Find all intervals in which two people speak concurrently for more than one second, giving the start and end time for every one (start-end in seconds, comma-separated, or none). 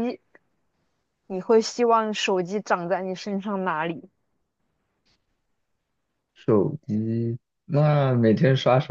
none